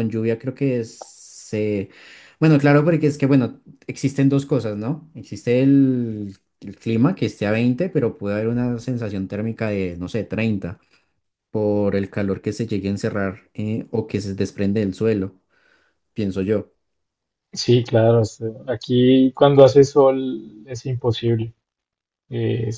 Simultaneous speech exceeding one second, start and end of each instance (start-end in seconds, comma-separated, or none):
none